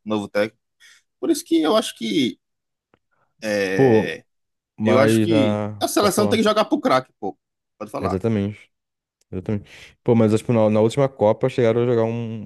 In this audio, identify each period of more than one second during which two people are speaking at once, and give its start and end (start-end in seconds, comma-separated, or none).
4.8-6.4